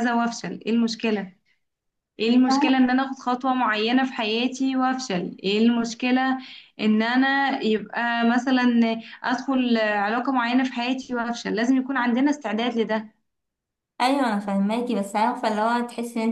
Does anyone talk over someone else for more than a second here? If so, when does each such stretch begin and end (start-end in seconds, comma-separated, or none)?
none